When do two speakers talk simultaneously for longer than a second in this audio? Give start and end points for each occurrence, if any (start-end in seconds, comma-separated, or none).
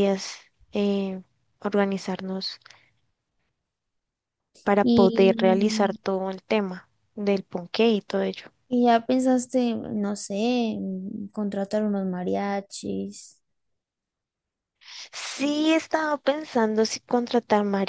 none